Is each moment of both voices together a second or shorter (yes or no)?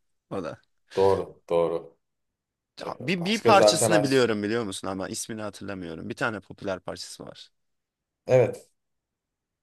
no